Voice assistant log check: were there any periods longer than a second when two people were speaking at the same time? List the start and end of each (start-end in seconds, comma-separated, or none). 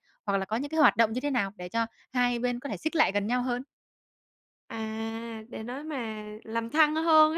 none